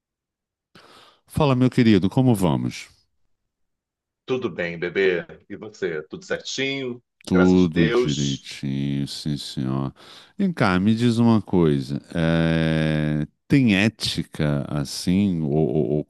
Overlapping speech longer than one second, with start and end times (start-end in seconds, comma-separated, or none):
7.2-8.5